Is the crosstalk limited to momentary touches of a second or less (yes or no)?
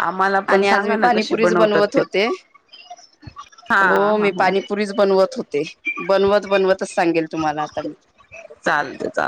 no